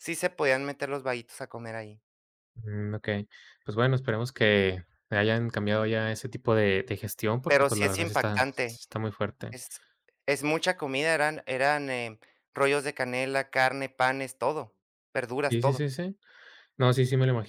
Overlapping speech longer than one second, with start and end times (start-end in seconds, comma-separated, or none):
7.5-8.8